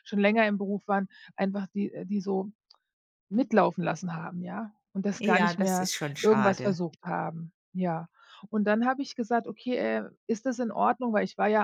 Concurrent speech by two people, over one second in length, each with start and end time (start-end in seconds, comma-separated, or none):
5.2-6.8